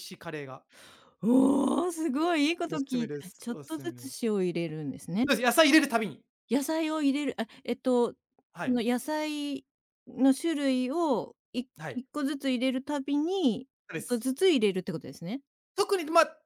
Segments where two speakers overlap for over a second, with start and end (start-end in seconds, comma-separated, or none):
2.7-4.1